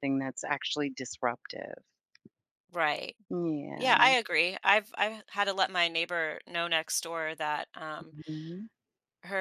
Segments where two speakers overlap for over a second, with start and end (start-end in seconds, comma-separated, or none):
none